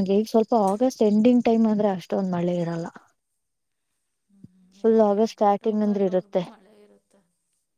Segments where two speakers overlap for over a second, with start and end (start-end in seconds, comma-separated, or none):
4.8-6.4